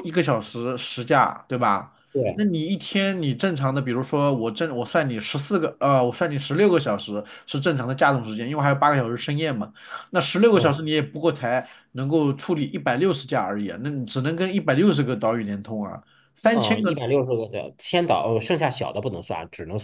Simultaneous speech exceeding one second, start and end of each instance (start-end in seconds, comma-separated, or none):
none